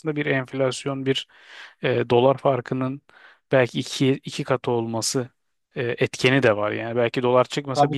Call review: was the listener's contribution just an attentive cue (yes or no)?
no